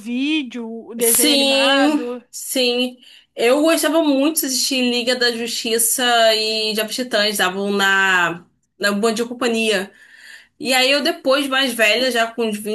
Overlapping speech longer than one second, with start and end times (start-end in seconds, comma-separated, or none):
1.0-2.2